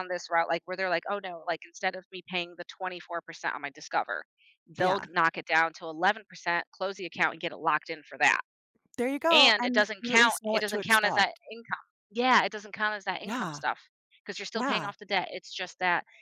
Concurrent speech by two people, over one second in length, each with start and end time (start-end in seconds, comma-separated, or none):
9.3-11.4